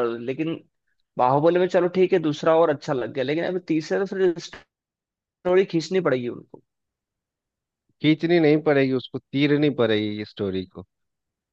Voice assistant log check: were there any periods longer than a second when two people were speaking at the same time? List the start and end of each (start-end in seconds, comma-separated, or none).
none